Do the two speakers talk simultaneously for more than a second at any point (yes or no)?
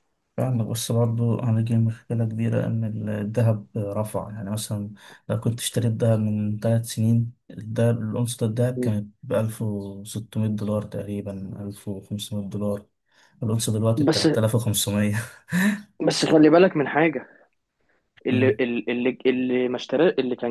no